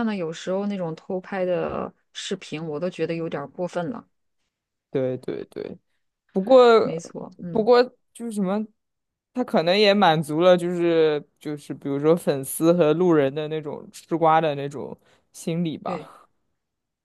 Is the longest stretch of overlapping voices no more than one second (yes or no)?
yes